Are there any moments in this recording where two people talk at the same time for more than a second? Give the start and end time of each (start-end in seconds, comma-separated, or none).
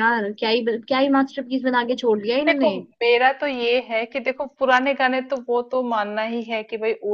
none